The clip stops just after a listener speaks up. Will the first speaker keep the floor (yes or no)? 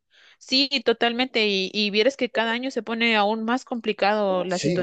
no